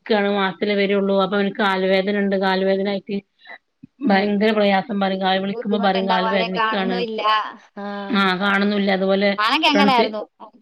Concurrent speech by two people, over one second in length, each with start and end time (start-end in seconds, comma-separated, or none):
5.5-6.9